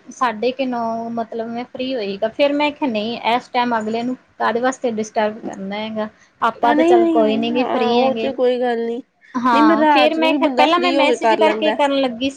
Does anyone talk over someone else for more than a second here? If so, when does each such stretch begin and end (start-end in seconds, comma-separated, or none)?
6.6-8.3